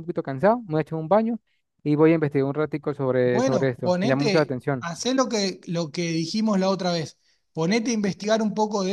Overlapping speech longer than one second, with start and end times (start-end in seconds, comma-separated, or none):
3.2-4.9